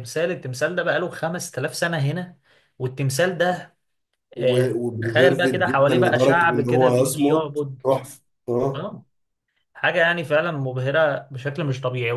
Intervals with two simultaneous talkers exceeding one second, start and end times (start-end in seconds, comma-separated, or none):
4.4-7.8